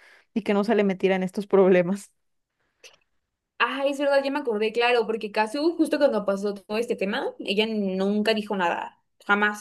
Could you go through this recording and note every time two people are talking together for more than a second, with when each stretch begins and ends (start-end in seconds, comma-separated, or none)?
none